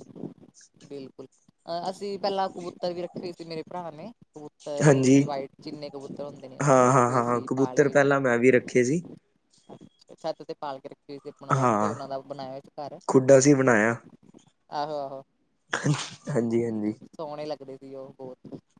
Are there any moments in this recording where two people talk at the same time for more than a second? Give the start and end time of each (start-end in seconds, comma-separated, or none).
6.7-8.2